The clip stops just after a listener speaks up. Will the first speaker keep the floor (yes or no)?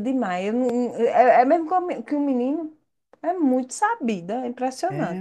no